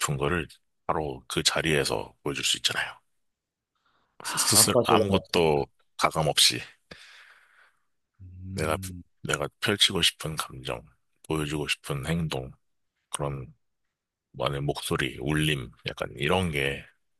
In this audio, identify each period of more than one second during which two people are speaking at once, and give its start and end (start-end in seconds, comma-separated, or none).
4.2-5.6